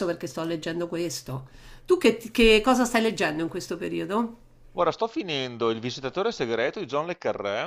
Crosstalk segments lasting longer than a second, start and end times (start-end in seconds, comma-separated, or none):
none